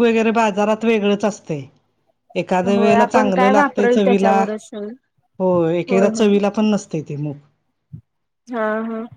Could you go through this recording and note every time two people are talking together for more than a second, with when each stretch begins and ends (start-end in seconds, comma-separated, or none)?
2.8-4.4